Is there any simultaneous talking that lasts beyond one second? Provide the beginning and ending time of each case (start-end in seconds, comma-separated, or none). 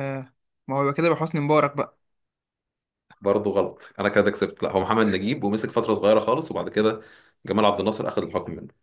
none